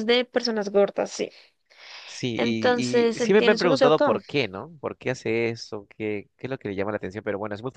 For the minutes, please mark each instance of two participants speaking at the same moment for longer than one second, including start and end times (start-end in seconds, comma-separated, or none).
2.4-4.2